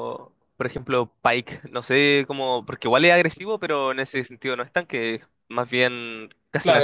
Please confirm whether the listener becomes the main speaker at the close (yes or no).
yes